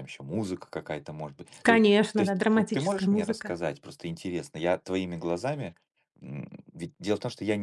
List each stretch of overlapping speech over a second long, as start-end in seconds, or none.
1.6-3.6